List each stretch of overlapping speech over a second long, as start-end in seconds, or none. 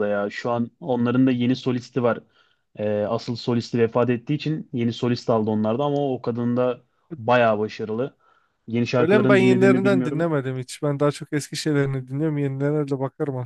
9.0-10.3